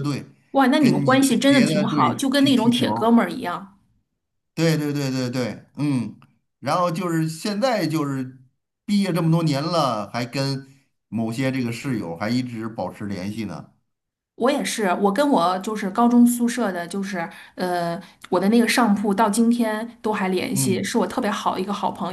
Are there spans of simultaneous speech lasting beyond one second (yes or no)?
yes